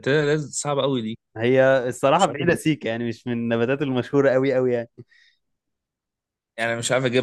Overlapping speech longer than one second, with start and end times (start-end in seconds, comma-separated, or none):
none